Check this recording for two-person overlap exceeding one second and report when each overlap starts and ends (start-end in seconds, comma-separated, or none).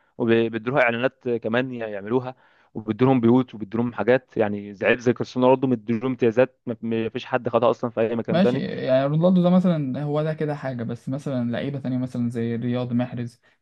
none